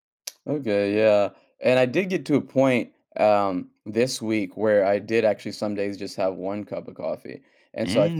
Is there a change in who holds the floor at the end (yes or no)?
no